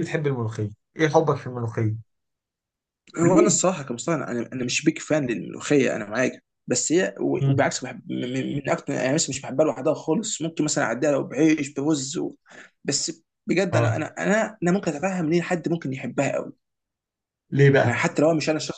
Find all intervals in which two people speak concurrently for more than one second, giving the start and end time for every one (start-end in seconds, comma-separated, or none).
none